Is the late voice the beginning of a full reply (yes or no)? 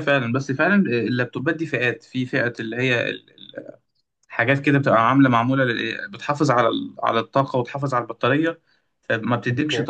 no